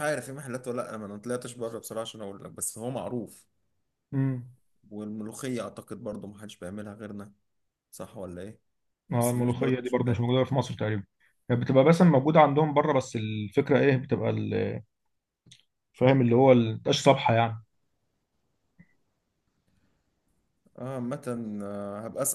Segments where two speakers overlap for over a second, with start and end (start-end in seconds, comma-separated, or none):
9.1-10.4